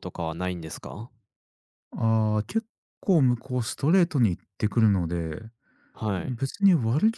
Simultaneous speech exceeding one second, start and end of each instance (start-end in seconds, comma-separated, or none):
none